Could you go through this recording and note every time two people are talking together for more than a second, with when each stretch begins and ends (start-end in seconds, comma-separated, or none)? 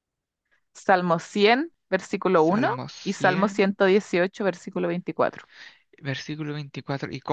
2.4-3.8